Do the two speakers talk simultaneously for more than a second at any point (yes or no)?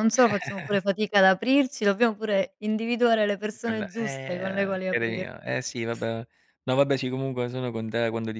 yes